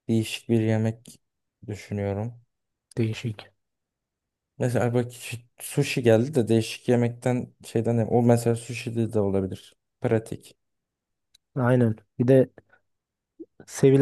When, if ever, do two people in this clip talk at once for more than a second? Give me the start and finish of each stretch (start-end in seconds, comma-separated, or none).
none